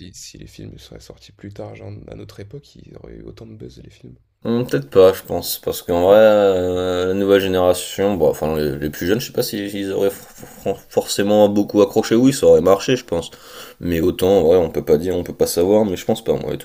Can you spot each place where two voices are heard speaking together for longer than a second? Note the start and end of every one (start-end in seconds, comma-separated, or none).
none